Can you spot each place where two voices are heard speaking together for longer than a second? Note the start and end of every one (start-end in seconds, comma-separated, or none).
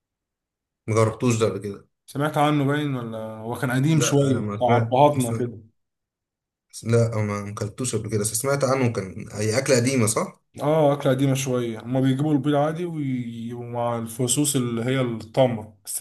3.9-5.5